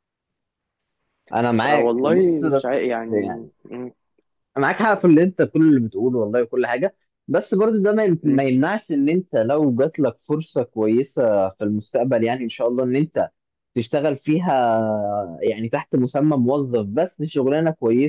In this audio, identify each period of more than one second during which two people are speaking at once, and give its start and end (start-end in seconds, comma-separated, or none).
1.6-3.1